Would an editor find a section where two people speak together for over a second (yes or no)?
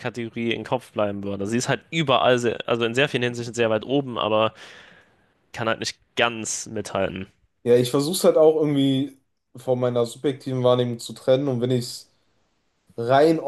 no